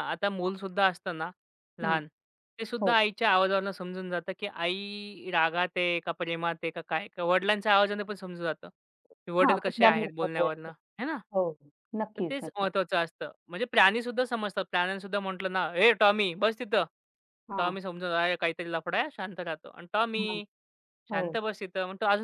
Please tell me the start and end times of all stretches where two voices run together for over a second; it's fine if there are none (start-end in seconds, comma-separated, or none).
9.4-10.7